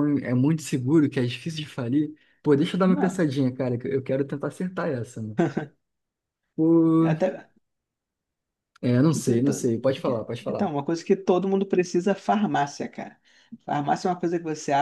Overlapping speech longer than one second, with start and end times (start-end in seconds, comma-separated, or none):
9.1-10.7